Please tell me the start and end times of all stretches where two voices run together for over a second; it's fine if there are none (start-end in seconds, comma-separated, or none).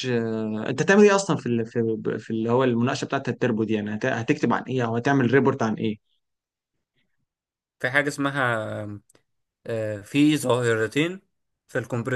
none